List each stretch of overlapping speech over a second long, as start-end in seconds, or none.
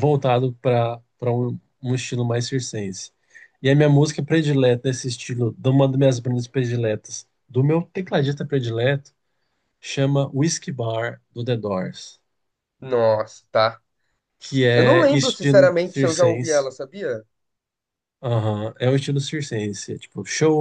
14.7-16.7